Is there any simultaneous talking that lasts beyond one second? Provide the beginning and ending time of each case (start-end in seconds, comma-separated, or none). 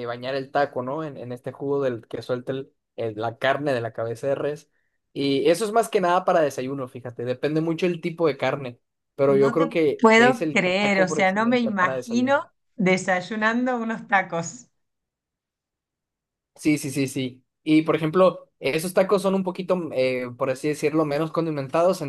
9.3-12.5